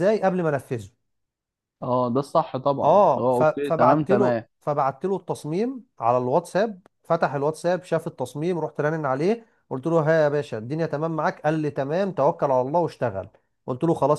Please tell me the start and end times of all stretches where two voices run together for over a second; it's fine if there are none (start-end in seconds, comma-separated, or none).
2.8-4.4